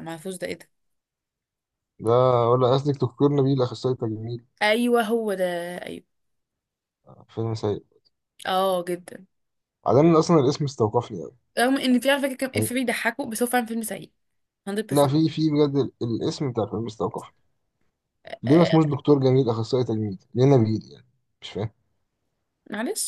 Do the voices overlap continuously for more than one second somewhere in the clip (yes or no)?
no